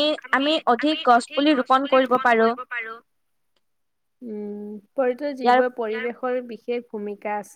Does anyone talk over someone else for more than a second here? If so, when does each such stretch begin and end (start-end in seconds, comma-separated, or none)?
none